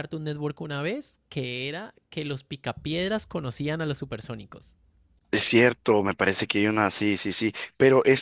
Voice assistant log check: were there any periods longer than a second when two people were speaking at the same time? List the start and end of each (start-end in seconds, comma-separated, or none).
none